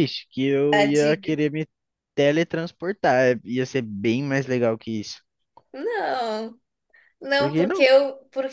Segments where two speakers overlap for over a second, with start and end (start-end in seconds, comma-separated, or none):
none